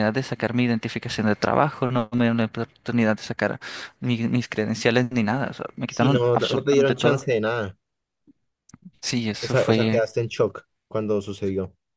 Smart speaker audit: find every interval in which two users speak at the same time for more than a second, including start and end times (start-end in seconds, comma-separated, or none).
5.9-7.3